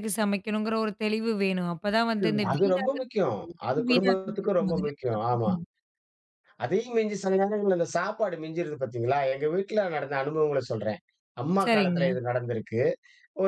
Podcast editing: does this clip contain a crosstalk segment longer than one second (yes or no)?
yes